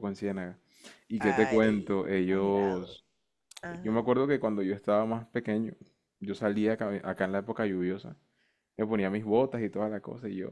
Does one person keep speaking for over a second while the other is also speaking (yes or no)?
yes